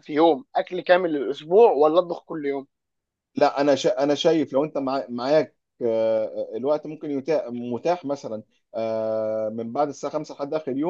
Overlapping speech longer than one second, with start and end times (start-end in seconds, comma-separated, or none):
none